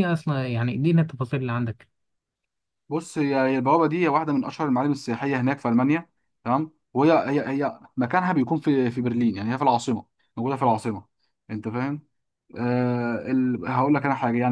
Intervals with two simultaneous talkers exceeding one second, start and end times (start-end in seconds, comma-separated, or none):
none